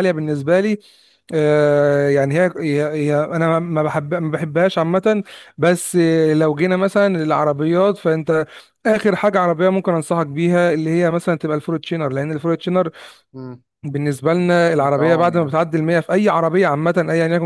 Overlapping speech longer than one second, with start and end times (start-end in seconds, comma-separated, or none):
14.3-15.6